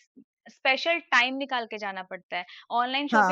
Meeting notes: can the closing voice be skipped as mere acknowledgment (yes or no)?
yes